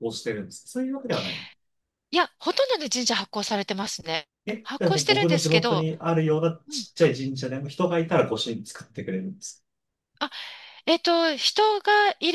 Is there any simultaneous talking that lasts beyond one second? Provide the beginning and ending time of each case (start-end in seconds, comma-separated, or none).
4.5-5.9